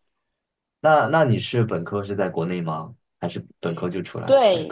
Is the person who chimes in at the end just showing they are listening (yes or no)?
no